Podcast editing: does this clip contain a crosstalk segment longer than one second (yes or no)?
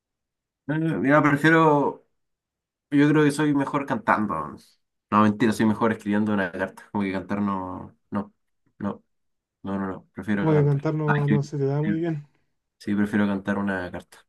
yes